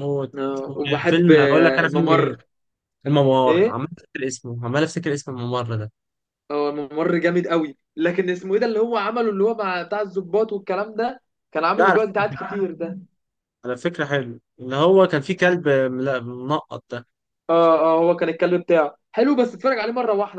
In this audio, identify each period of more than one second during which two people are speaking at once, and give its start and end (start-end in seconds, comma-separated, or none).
1.1-2.4